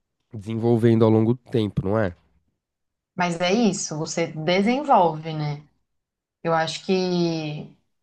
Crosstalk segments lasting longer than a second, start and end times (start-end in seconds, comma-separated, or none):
none